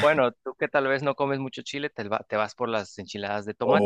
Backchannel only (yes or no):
no